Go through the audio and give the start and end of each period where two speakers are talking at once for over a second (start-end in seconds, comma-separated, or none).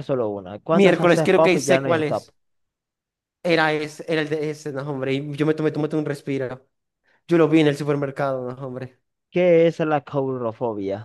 0.7-2.3